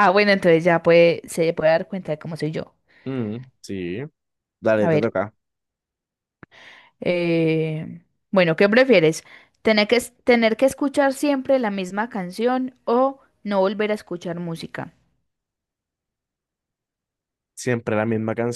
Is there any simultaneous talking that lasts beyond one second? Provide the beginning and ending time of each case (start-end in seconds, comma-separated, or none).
none